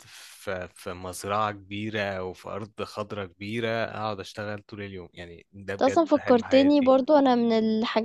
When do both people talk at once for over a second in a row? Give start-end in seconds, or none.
5.7-7.0